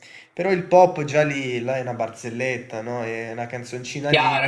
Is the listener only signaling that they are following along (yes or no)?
no